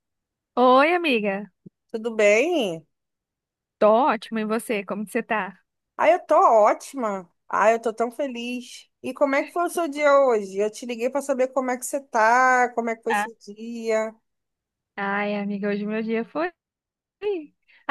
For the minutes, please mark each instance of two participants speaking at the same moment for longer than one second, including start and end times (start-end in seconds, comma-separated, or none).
none